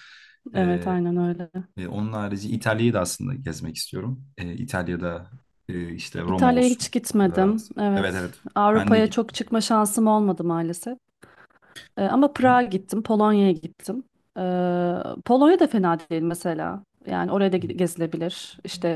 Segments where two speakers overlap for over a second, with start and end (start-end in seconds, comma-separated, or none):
6.2-9.4